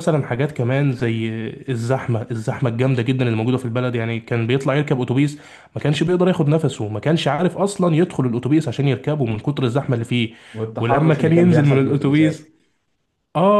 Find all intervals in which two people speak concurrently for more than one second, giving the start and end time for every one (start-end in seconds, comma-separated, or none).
10.8-12.4